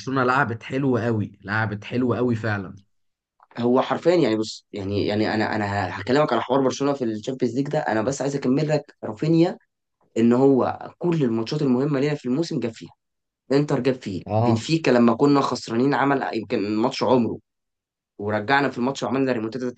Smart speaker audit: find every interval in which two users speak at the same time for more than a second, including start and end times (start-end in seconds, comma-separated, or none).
none